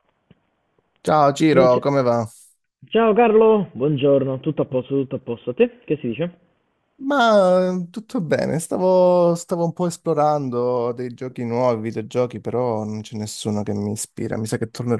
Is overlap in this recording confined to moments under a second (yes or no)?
yes